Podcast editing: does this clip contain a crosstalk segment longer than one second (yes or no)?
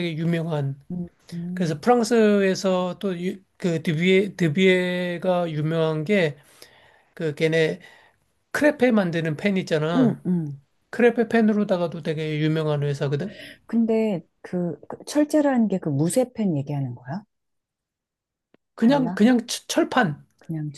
no